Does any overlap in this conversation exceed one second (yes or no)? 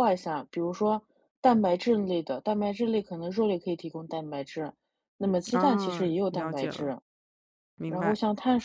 yes